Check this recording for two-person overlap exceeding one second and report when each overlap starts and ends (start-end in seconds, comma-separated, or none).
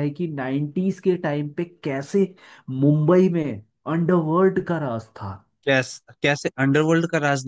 none